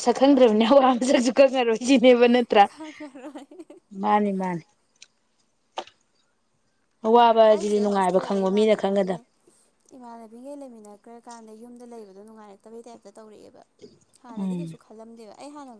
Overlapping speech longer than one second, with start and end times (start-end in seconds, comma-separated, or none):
7.5-9.2